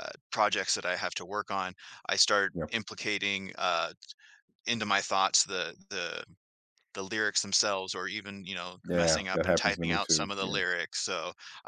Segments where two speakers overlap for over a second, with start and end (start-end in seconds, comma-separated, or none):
8.9-10.6